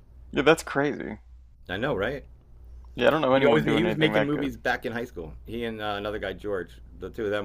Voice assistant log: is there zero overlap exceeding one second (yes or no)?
no